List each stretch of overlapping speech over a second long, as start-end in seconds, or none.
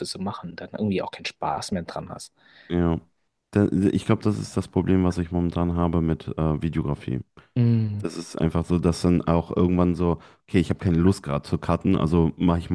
none